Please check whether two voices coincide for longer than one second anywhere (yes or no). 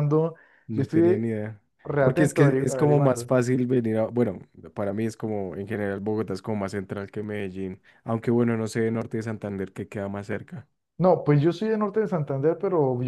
yes